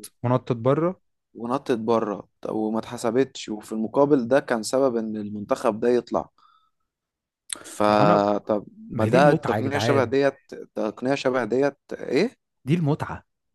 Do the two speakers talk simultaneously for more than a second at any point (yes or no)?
yes